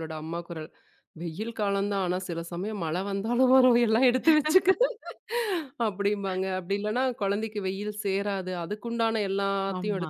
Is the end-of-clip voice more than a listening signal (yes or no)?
no